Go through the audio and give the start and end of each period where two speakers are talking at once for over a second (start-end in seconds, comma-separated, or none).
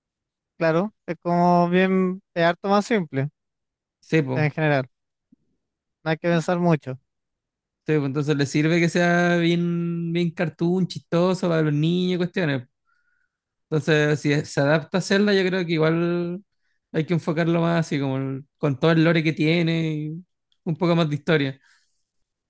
none